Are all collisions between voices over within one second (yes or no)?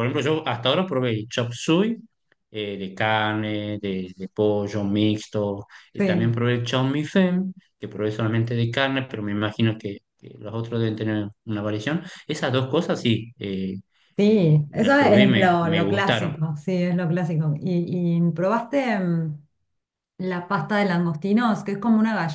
no